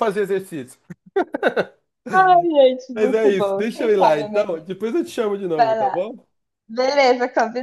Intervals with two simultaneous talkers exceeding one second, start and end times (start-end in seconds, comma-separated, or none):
3.0-4.7